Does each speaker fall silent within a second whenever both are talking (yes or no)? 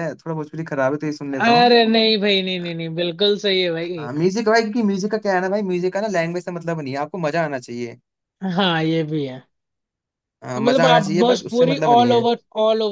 no